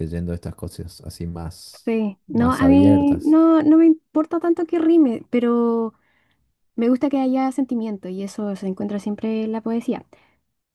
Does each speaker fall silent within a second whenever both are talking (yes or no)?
no